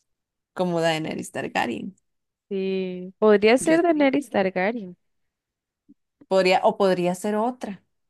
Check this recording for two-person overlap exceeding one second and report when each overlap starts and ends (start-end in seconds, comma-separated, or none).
none